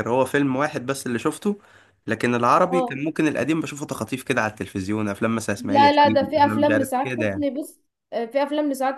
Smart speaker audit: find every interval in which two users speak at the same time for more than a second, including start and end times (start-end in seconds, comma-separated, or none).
5.6-7.5